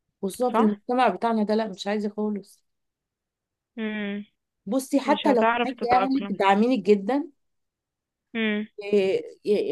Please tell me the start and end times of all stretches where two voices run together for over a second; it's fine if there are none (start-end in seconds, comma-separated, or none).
5.0-6.4